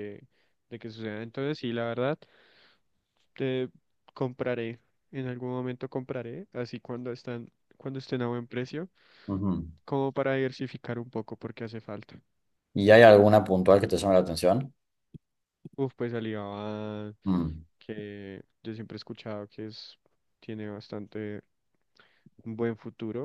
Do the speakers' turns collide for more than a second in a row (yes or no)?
no